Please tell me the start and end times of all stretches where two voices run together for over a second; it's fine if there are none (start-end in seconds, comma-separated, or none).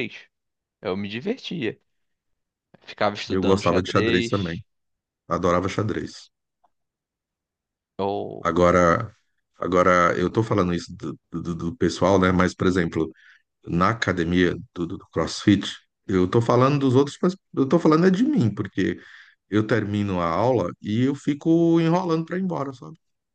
3.3-4.6